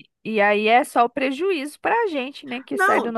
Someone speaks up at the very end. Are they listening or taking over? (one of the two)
taking over